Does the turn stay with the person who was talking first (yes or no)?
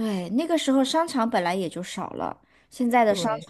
yes